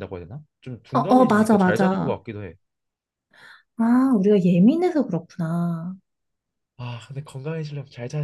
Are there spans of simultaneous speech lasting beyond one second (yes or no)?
yes